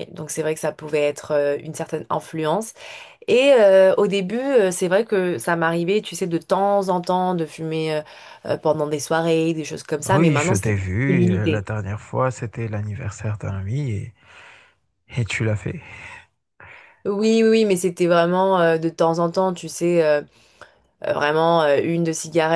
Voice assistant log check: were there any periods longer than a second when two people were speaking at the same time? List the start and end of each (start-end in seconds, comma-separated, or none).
10.1-11.7